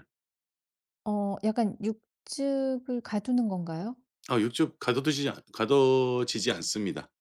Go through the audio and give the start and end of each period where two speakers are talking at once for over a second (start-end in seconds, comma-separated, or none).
none